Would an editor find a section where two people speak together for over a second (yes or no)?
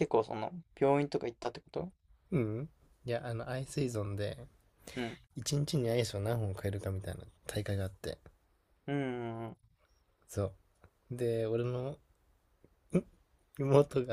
no